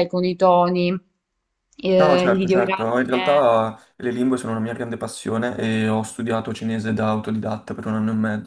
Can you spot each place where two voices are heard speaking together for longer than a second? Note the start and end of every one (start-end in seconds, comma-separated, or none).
1.9-3.5